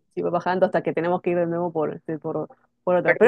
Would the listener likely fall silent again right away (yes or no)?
yes